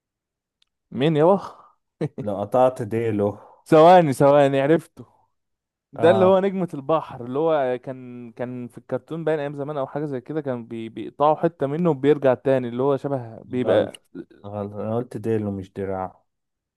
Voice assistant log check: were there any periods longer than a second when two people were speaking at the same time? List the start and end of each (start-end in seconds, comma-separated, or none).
none